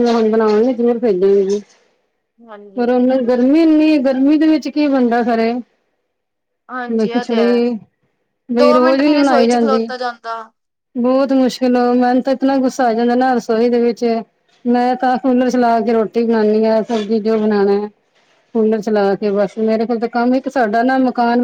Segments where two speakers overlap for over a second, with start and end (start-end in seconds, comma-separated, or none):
8.6-9.9